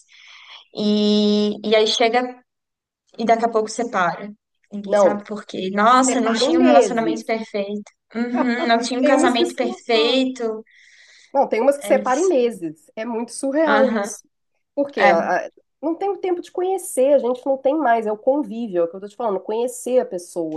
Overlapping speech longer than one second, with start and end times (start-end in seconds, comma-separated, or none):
6.0-7.3, 9.0-10.2